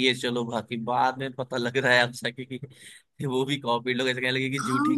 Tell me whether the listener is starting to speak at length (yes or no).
yes